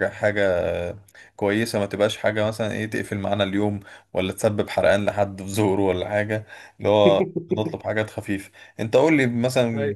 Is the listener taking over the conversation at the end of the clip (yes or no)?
no